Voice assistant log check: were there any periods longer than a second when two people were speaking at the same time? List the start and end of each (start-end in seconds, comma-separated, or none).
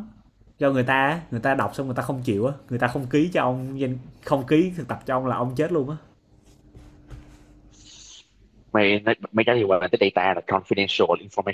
none